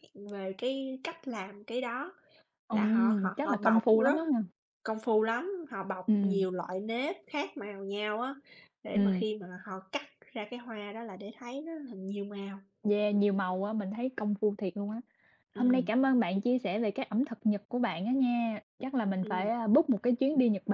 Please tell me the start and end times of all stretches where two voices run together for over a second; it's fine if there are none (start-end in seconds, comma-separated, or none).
2.7-4.2